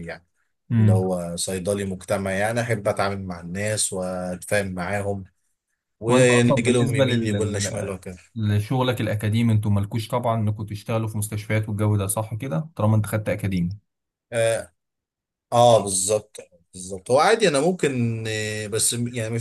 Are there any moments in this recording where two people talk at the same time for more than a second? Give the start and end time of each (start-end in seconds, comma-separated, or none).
6.1-7.9